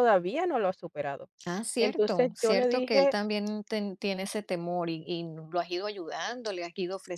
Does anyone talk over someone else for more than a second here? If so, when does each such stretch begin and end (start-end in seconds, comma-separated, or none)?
1.8-3.1